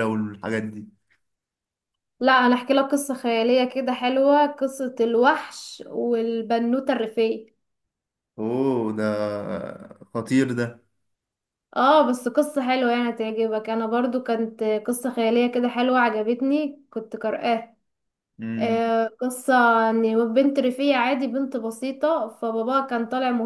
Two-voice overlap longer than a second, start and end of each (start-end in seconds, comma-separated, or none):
none